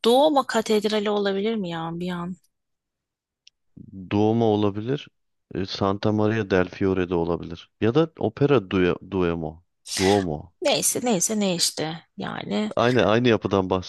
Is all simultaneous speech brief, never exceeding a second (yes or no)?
yes